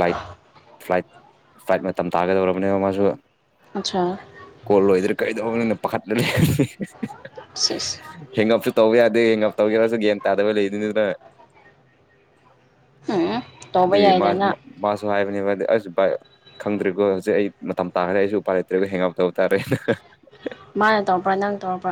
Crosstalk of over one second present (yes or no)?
no